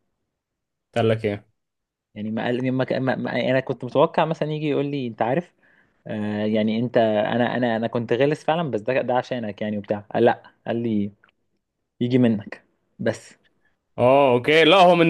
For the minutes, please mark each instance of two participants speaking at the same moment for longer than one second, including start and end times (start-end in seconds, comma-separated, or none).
none